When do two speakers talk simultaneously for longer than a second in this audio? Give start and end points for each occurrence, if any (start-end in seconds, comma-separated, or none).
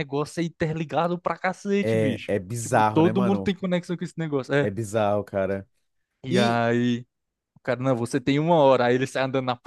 1.8-3.5